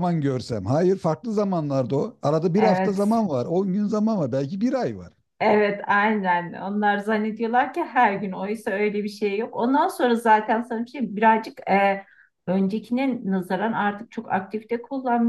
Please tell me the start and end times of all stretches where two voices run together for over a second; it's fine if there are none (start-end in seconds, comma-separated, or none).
none